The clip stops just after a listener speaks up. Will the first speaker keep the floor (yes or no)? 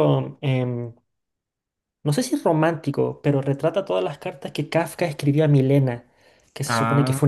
yes